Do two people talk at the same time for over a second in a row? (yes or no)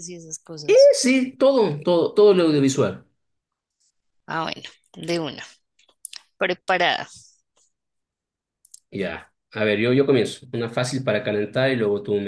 no